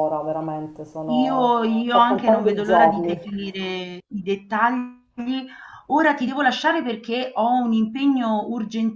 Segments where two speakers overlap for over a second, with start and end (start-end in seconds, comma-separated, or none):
1.1-3.4